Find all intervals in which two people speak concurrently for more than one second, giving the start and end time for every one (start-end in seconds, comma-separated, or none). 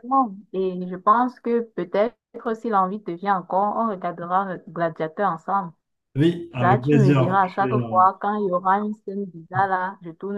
6.6-8.0